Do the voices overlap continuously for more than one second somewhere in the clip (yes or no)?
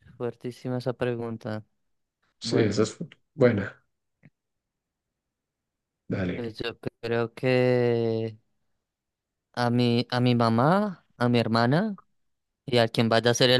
no